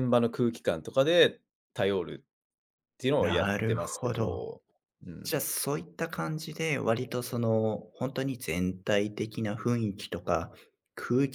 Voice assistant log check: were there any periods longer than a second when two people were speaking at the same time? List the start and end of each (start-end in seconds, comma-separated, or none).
3.2-4.4